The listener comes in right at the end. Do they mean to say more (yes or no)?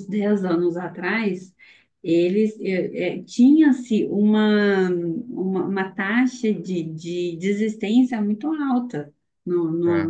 no